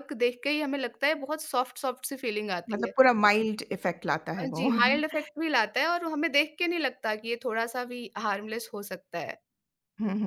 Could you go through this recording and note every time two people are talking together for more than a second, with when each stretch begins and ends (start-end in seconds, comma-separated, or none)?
none